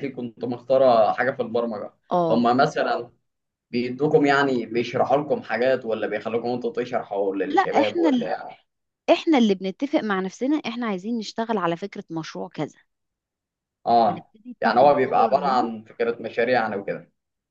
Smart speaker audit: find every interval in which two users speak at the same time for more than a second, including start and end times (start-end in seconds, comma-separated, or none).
14.1-15.7